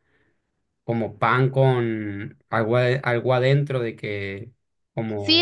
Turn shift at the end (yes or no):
yes